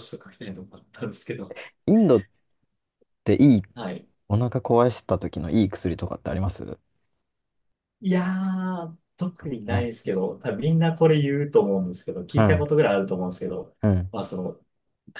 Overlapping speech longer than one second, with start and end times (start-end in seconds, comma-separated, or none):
none